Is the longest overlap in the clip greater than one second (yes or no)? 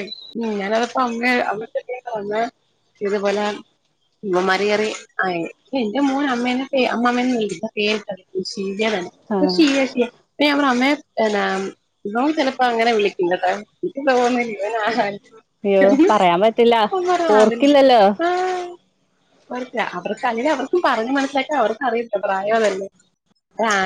no